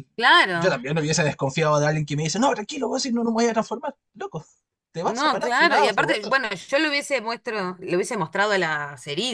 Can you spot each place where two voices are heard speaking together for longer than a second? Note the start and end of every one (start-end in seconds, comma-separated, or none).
5.0-6.3